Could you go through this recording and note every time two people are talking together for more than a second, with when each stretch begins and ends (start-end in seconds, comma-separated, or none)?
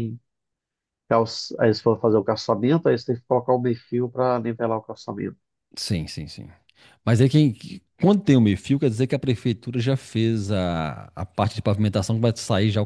none